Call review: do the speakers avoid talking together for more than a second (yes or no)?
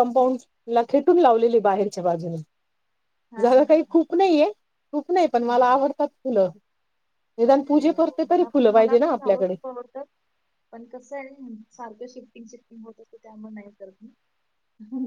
no